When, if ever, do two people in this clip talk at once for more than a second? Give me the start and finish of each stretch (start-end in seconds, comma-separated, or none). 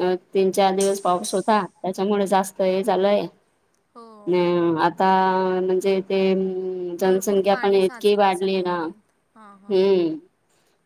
7.0-9.8